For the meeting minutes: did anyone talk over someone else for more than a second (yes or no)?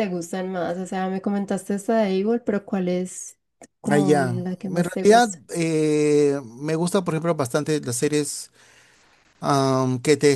yes